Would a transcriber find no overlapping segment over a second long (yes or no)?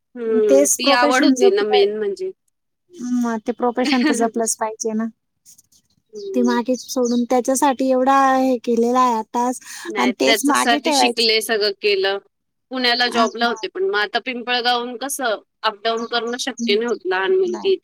yes